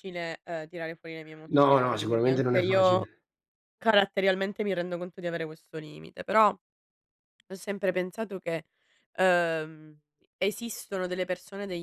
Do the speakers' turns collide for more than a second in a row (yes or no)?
yes